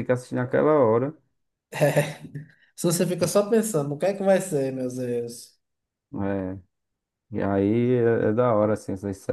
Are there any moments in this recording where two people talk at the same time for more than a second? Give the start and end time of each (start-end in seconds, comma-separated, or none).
none